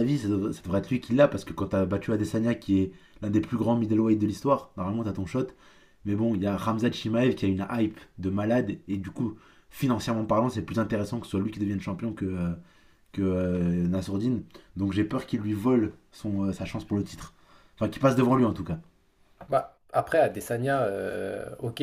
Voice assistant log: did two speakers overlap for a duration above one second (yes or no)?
no